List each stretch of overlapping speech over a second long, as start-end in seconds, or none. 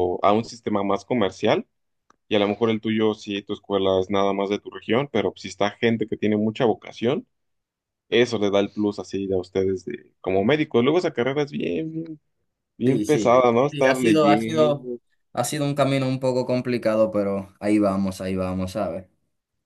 12.8-14.9